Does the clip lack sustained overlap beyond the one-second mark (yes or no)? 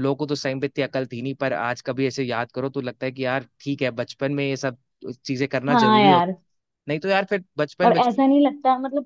yes